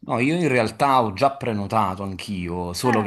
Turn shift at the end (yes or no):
no